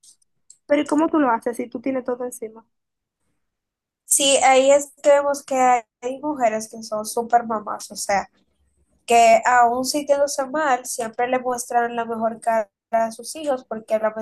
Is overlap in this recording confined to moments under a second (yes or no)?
yes